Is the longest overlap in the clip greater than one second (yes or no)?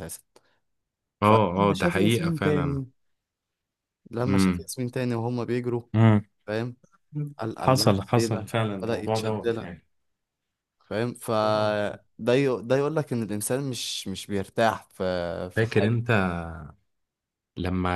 yes